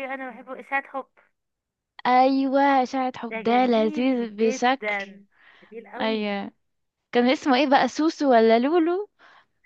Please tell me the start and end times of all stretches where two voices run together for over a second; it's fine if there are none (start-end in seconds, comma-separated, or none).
3.3-5.0